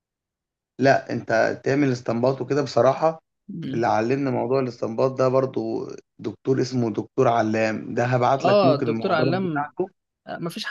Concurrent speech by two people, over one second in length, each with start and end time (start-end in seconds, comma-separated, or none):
8.4-9.7